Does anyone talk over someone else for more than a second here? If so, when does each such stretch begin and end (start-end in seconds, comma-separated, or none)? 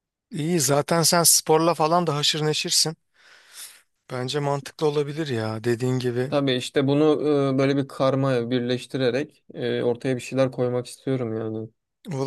none